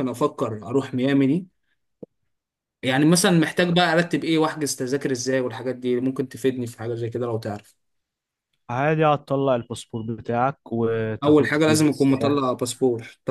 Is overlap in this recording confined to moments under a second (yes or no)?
no